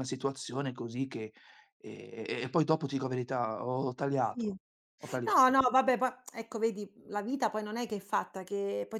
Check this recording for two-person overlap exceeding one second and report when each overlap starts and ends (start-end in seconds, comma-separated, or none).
none